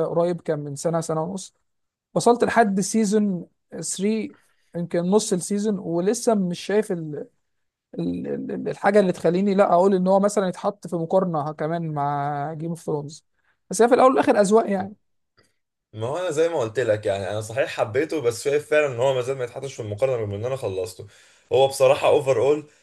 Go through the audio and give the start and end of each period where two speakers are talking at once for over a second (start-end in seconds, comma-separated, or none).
none